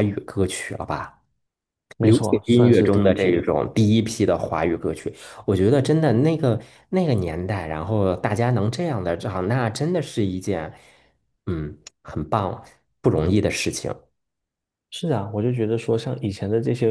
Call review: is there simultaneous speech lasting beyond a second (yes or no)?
yes